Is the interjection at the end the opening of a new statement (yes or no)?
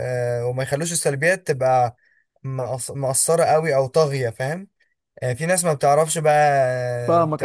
no